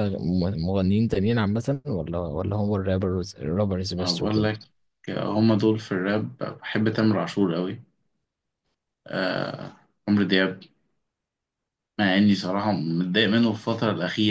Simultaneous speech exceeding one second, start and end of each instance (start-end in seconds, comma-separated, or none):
none